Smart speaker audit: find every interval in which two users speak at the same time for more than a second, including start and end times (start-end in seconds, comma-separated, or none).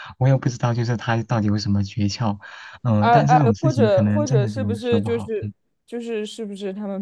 3.0-5.5